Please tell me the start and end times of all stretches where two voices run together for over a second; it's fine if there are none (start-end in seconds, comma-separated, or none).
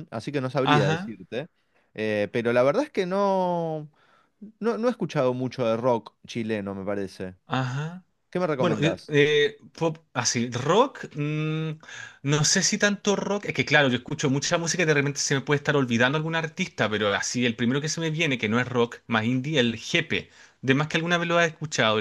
none